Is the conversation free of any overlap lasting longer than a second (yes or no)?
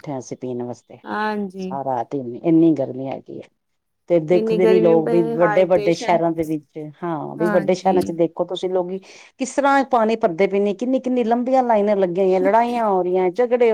no